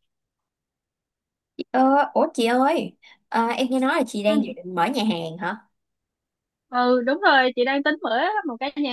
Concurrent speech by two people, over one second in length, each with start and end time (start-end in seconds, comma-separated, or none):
none